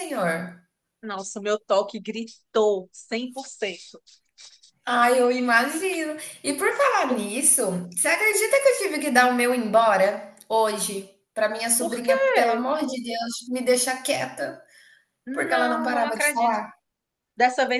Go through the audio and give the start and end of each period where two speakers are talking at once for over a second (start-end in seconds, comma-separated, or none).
15.3-16.6